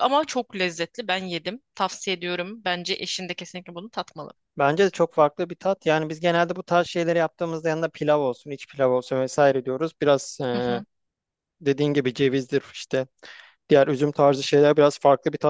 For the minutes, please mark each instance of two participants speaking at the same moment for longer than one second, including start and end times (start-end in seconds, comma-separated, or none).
none